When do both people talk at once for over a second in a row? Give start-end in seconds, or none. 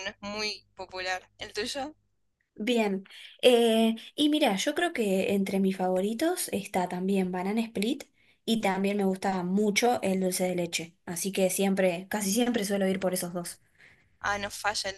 none